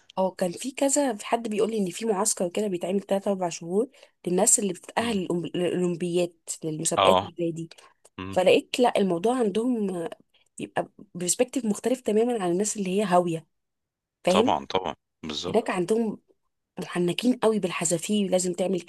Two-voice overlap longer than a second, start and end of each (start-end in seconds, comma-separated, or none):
none